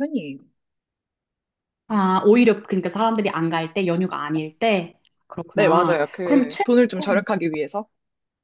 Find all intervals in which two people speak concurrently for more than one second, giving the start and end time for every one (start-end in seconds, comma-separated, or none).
5.5-7.2